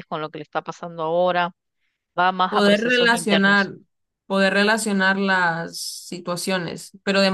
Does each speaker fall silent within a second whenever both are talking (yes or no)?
no